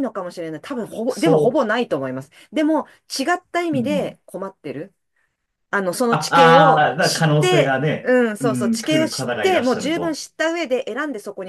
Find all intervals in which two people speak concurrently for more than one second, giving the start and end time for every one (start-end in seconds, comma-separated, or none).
6.1-10.2